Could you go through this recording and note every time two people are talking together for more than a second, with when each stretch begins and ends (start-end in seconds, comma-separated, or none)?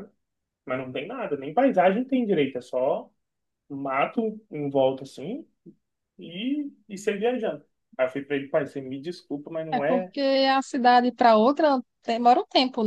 none